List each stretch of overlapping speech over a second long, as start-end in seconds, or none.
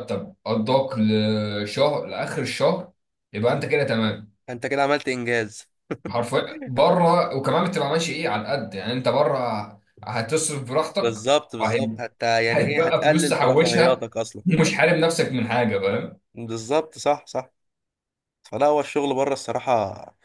12.5-14.1